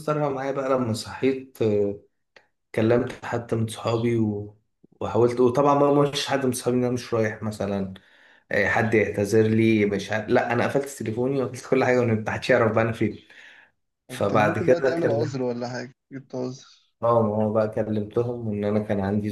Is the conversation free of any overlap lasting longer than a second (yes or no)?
no